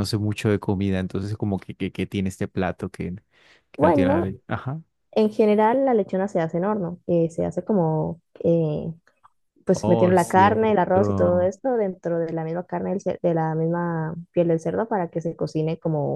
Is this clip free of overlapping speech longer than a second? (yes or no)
no